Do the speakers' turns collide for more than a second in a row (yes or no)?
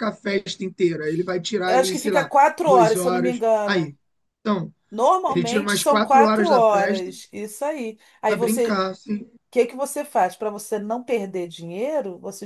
yes